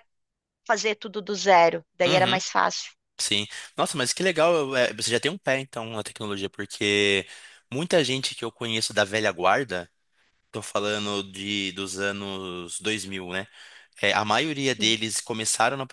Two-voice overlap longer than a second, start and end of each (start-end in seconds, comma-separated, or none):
none